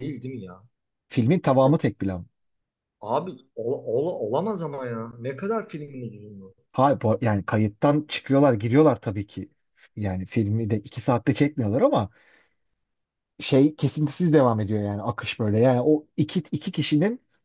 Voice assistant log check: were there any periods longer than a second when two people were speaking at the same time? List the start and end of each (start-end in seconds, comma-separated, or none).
none